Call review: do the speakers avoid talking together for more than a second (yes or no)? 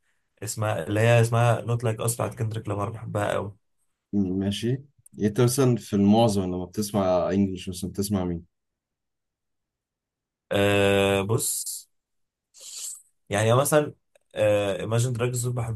yes